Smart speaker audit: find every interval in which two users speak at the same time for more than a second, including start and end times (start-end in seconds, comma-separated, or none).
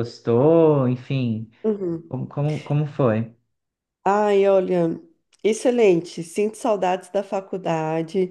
none